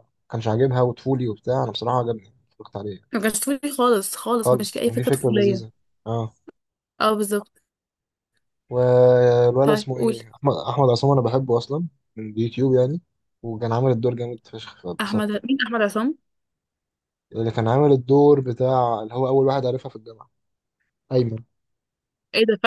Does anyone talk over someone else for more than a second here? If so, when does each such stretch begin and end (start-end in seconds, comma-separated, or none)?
4.4-5.6